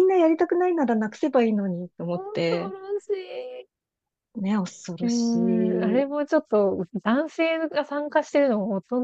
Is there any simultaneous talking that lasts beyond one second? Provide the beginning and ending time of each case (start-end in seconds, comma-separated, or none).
none